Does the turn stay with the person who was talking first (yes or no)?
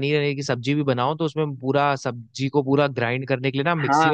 no